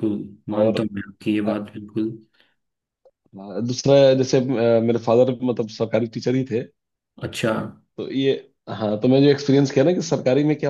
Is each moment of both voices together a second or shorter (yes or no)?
yes